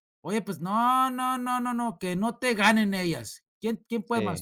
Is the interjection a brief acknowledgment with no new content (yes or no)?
yes